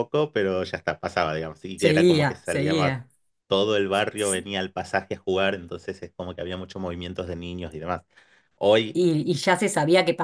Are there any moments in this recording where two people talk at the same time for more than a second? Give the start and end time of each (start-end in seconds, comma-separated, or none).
1.8-3.0